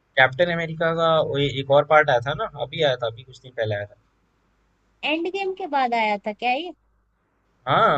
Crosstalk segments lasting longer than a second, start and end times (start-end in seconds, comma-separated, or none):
none